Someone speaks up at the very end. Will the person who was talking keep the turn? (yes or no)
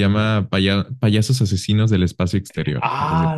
no